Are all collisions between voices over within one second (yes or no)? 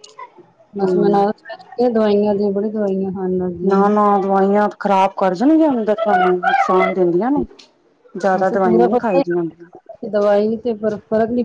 no